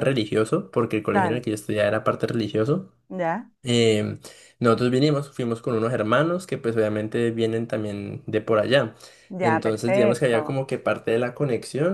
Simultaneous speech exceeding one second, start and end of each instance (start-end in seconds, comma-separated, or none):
9.4-10.6